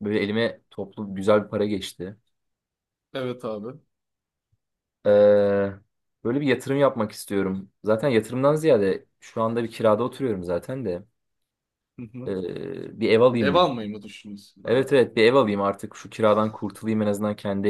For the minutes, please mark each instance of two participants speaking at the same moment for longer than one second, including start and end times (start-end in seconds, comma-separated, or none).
none